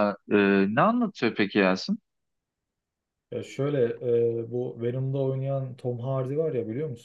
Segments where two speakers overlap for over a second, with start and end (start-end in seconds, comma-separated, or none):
none